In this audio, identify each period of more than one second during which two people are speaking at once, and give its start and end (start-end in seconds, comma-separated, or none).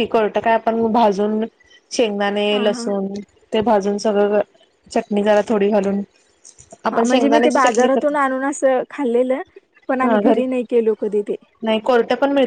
6.9-8.3